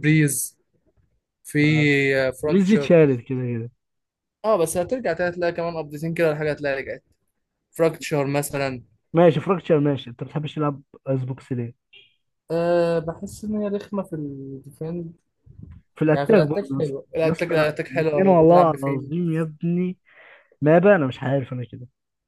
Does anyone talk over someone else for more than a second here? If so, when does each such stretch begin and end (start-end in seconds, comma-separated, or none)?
16.1-19.1